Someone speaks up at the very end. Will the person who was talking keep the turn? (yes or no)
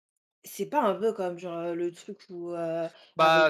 yes